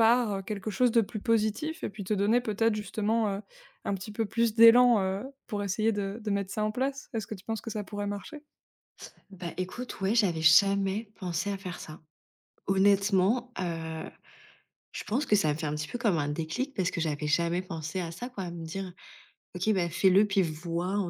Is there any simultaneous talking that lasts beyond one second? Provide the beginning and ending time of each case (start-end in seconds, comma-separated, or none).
none